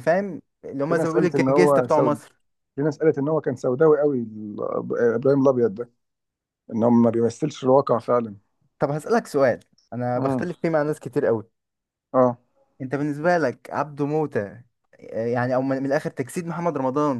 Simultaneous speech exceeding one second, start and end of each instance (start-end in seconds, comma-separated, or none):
0.9-2.2